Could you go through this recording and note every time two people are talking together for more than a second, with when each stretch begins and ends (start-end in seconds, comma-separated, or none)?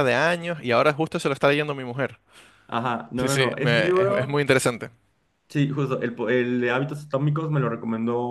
3.2-4.4